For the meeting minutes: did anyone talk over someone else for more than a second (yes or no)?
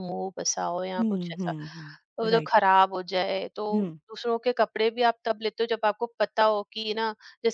no